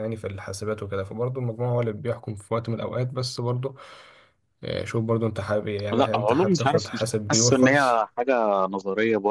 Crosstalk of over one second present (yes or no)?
yes